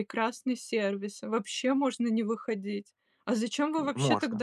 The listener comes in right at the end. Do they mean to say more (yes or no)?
no